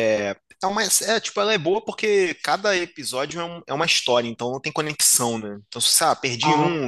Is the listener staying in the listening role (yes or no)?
yes